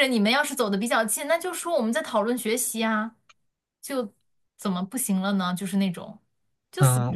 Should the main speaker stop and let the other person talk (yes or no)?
yes